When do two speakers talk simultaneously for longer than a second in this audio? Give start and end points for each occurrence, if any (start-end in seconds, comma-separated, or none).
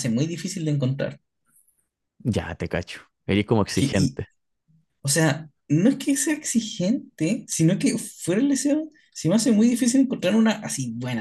none